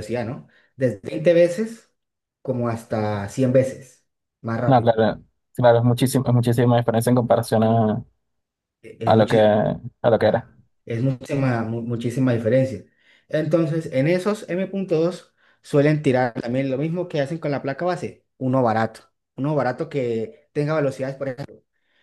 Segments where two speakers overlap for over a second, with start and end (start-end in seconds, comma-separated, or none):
none